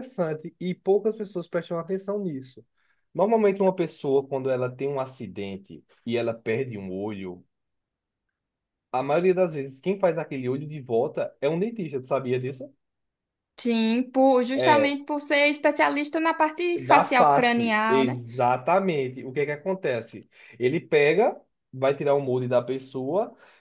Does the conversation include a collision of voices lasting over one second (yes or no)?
yes